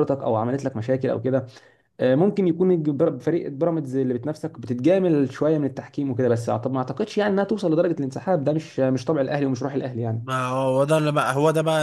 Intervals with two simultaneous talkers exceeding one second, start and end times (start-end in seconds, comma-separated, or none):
none